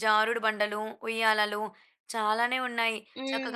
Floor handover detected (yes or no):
no